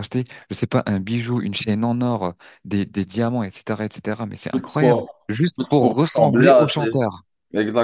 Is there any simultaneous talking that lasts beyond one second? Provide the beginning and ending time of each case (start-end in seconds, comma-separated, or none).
4.5-7.0